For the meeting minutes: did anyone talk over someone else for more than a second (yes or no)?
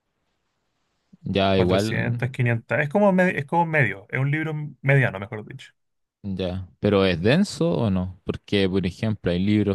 no